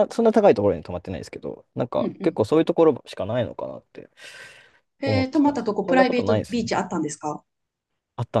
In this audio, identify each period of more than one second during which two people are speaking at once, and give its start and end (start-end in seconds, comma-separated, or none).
5.0-6.7